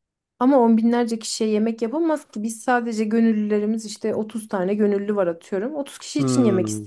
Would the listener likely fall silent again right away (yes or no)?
no